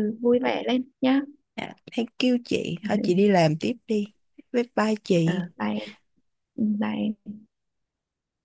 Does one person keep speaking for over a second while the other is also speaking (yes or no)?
no